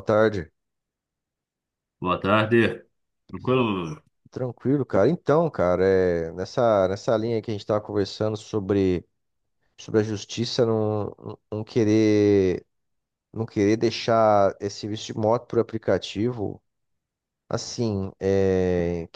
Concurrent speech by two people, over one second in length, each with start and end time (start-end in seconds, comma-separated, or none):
none